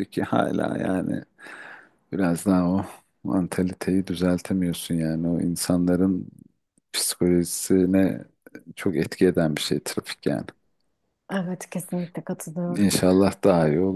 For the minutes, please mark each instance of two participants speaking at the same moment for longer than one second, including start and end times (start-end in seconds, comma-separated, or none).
none